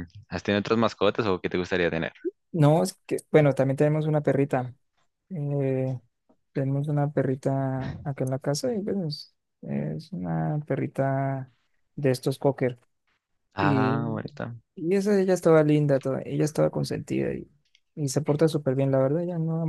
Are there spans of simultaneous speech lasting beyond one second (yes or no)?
no